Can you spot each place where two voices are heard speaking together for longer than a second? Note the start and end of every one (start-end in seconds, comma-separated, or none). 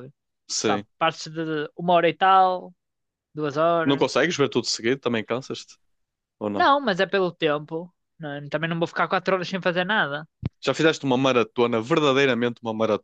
none